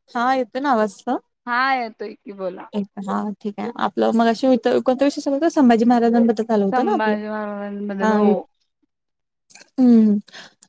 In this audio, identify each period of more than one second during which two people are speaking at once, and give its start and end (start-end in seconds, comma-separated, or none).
none